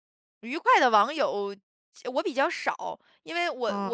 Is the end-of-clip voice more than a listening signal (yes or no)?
yes